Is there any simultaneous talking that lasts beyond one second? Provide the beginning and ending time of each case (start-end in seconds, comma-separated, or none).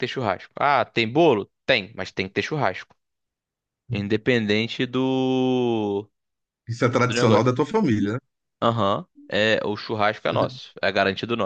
none